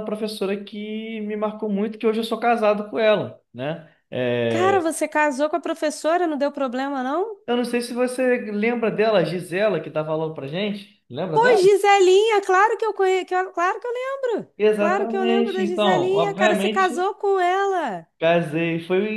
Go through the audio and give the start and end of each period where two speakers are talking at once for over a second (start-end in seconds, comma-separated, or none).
14.6-17.1